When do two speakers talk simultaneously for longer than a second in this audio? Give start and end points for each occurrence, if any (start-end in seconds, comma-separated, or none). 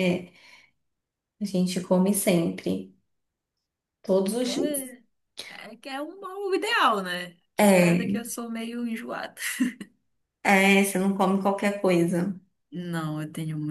none